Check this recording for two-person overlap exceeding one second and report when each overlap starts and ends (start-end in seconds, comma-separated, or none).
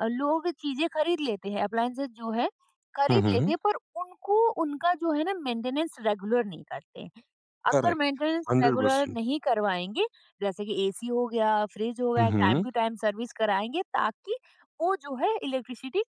7.7-9.2